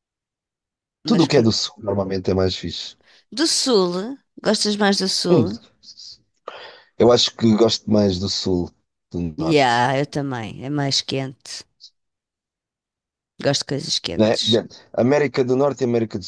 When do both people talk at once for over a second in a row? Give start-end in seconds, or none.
none